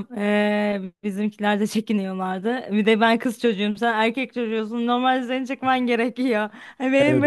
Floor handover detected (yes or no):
no